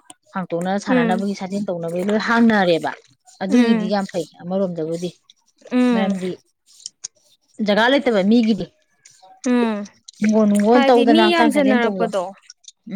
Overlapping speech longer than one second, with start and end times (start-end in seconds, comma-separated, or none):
10.7-12.2